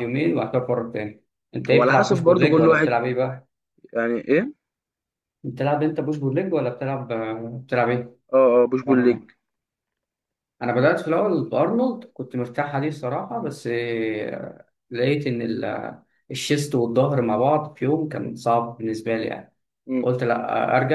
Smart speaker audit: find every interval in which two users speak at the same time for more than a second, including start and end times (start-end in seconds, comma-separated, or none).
1.7-3.0